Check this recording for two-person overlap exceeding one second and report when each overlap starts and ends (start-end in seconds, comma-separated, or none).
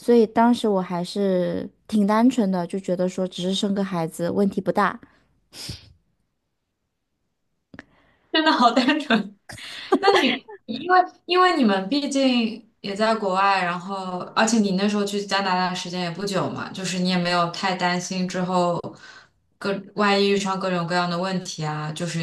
none